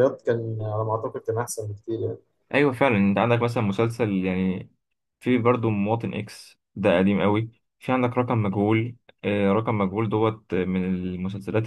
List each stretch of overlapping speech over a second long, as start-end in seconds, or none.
none